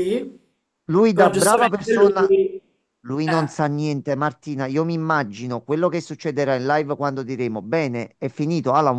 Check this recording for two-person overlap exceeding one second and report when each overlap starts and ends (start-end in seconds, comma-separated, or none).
1.1-2.3